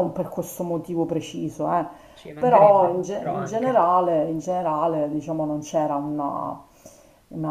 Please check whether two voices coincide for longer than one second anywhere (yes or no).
yes